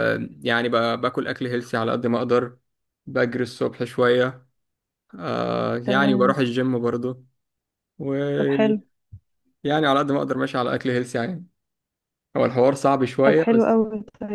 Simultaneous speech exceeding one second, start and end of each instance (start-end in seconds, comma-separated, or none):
none